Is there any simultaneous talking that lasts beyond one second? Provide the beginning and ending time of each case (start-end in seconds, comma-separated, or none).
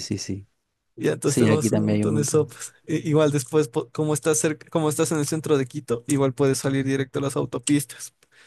1.2-2.5